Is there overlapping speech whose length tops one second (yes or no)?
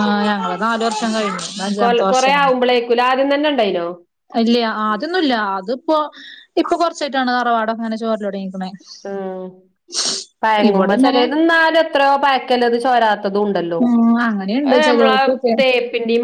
no